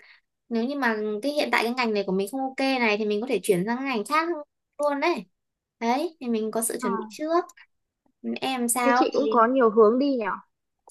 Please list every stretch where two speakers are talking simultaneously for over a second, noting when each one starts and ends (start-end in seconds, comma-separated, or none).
none